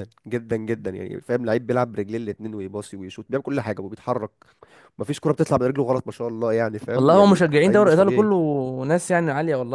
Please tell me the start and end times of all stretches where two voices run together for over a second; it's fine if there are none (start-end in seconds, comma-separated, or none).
6.9-8.3